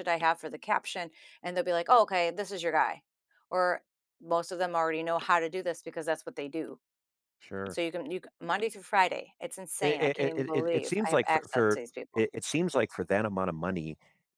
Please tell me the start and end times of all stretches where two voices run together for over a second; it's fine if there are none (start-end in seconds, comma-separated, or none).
9.8-12.2